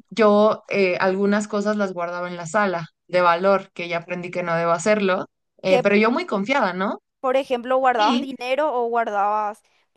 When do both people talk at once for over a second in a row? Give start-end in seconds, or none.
none